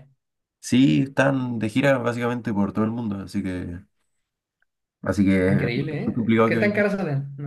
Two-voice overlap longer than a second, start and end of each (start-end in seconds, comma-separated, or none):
5.5-6.9